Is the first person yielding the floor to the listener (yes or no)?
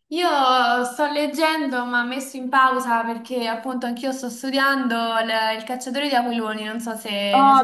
yes